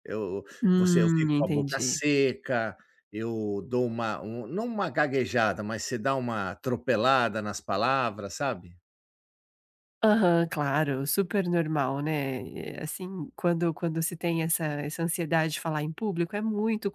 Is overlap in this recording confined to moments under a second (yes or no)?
no